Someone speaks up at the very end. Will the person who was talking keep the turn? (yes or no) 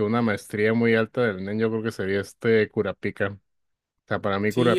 no